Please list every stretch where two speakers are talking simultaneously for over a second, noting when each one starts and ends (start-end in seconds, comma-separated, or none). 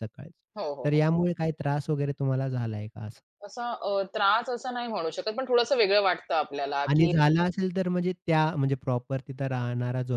none